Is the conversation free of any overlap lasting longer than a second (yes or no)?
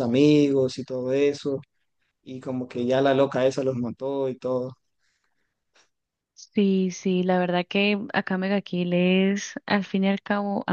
yes